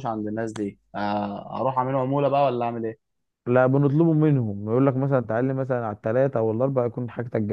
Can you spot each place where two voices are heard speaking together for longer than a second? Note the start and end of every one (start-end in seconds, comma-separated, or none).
none